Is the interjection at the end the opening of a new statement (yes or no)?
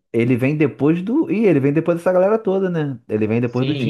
yes